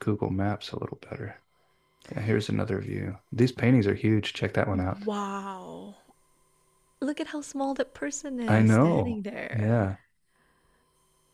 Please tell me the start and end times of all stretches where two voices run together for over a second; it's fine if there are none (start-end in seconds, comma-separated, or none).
8.4-9.8